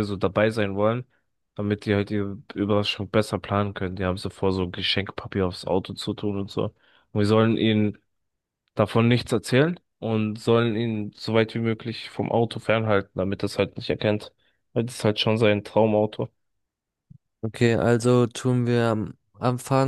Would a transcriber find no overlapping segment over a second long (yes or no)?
yes